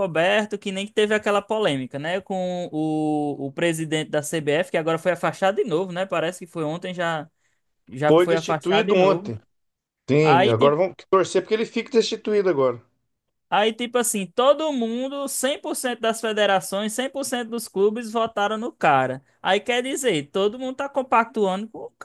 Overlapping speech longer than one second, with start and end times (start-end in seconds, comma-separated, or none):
8.1-9.3